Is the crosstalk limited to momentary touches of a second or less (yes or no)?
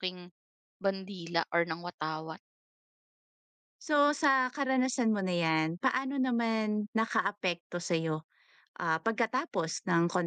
yes